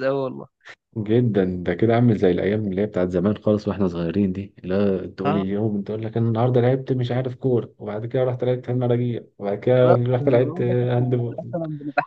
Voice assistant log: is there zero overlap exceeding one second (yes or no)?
no